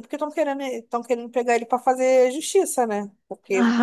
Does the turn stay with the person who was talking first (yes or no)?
no